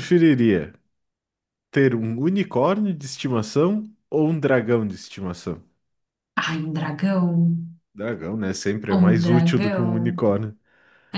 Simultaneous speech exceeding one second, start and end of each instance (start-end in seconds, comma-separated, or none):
8.9-10.2